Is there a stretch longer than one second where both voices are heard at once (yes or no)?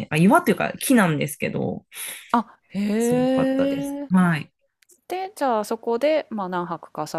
yes